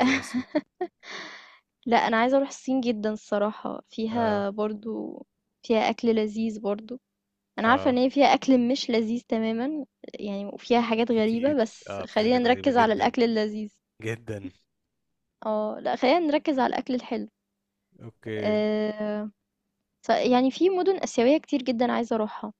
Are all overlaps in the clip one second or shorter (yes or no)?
no